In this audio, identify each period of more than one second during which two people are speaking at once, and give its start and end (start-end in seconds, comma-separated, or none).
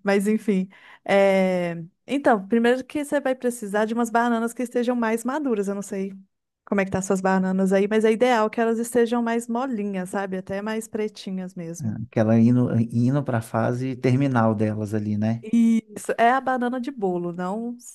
none